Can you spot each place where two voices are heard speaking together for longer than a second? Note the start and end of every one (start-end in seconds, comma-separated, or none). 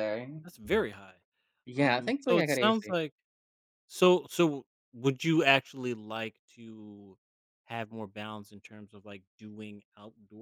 1.8-3.0